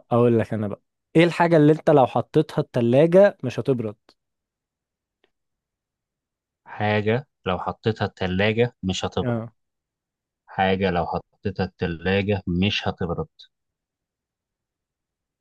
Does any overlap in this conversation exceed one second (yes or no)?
no